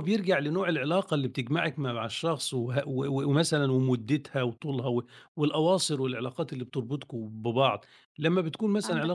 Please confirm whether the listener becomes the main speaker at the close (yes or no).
no